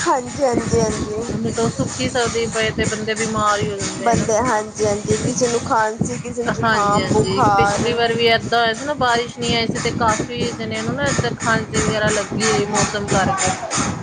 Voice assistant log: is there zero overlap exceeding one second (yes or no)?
yes